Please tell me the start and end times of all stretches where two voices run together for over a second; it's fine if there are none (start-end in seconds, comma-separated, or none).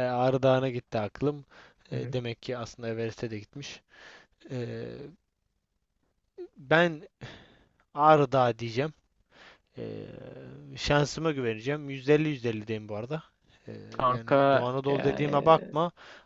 14.1-15.7